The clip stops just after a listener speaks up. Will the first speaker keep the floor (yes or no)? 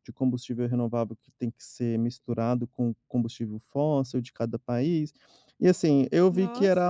no